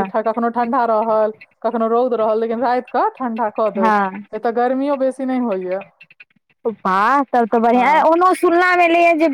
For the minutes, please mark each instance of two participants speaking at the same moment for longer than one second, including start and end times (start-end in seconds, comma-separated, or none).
none